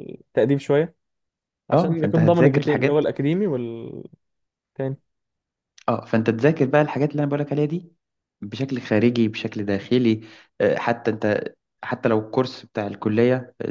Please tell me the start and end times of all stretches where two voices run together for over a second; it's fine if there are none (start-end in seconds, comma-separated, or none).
1.7-3.1